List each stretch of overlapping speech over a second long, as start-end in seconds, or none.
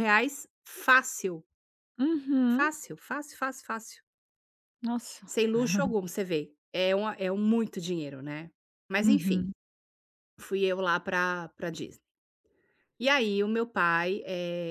none